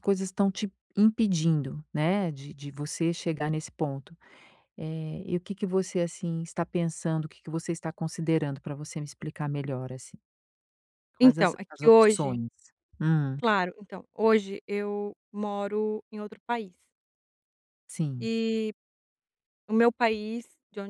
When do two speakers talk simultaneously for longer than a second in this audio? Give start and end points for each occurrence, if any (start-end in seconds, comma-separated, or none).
11.2-12.4